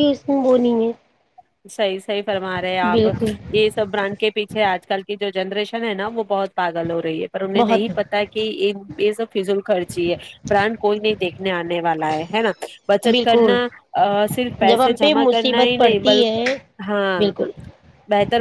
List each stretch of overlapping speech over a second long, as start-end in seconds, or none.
14.7-16.3